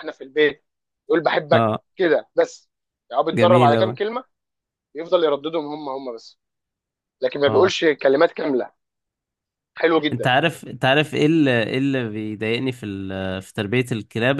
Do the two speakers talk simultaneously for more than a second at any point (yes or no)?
no